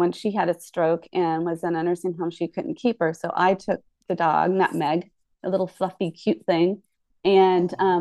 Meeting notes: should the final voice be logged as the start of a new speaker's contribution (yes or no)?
no